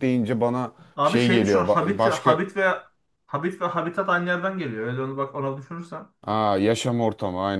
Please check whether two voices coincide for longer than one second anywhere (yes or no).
yes